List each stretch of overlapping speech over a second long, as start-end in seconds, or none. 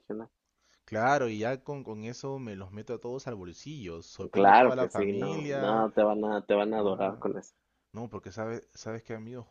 4.3-5.9